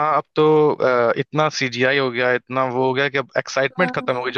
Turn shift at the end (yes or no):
no